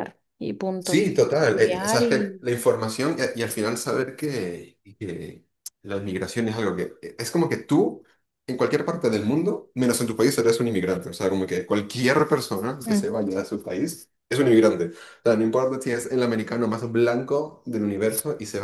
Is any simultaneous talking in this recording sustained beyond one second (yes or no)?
yes